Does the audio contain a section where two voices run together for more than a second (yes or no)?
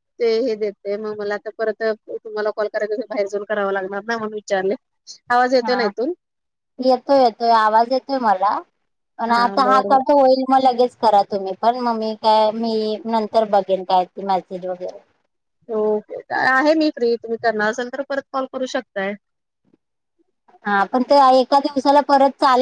no